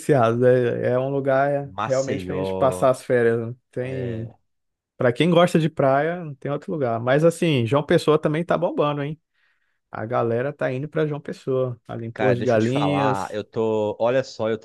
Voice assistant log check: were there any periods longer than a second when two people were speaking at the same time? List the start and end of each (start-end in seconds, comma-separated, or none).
1.7-3.0, 12.1-13.4